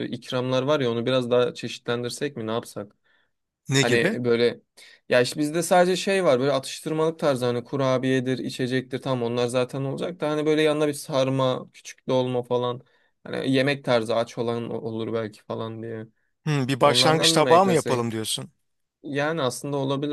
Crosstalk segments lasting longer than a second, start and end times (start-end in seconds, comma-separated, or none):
16.8-18.1